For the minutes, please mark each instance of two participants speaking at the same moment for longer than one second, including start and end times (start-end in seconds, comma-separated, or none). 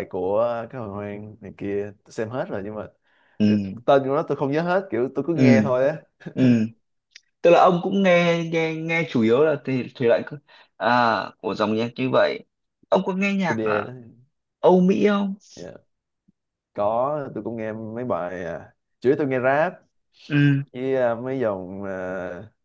none